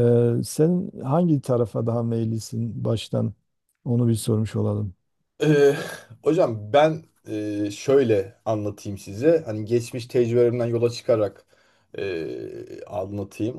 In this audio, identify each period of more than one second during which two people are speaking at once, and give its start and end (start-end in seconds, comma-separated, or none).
none